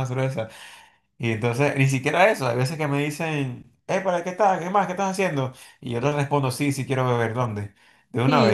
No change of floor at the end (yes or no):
no